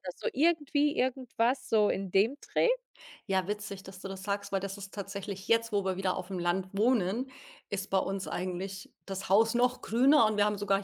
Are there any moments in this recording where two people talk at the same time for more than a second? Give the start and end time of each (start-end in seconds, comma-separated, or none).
none